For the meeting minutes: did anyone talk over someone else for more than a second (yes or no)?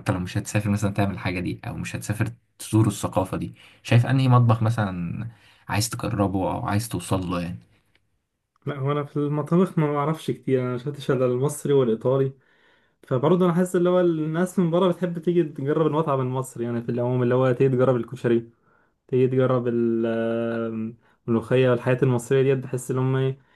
no